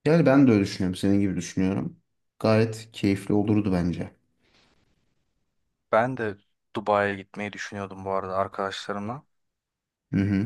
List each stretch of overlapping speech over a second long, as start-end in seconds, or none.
none